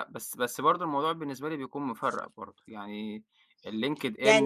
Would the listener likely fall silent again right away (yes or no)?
no